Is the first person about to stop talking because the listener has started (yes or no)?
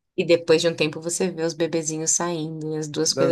yes